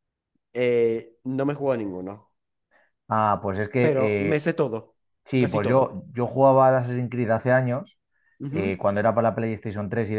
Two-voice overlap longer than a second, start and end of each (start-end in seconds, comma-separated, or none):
none